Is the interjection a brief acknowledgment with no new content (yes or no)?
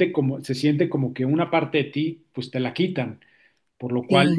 yes